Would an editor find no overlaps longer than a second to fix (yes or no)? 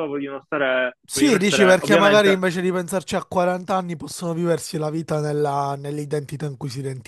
no